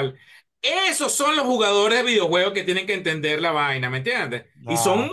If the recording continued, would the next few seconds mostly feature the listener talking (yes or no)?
no